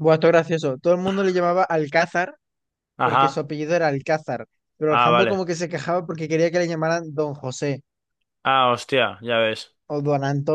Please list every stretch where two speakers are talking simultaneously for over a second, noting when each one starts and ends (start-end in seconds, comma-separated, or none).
none